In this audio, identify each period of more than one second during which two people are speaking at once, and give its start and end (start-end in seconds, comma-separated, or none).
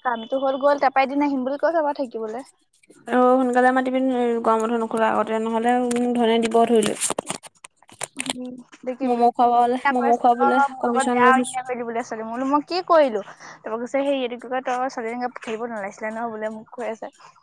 9.1-11.6